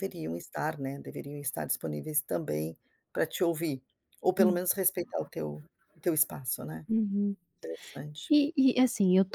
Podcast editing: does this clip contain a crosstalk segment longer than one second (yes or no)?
no